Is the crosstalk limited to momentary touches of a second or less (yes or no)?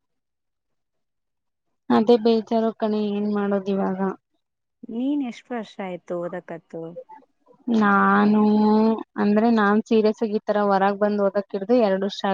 yes